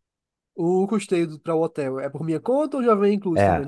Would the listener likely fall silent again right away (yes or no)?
no